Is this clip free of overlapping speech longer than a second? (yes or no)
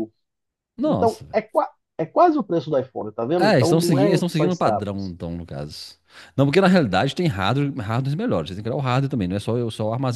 no